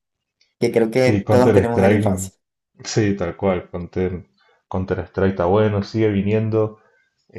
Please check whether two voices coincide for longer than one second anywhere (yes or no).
yes